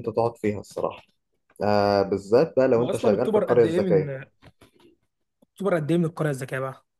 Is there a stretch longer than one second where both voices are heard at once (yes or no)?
yes